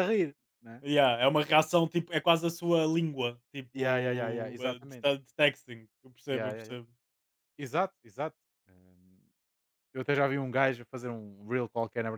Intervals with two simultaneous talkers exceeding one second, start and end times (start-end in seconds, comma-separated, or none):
3.7-5.1